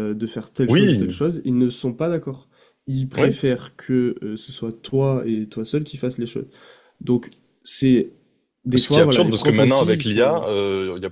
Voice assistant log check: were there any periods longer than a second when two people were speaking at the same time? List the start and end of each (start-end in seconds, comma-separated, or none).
8.7-10.5